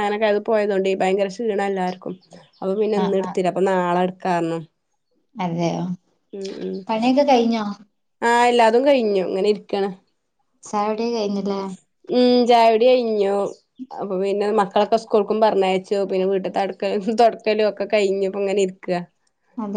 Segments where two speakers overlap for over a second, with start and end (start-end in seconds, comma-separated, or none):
none